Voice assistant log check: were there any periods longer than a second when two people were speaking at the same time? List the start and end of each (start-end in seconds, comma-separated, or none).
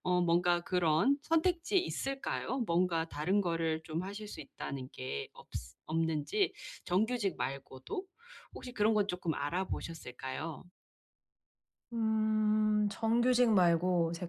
none